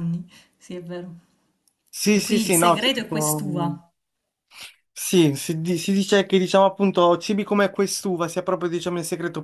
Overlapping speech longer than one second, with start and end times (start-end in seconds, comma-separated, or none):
2.1-3.7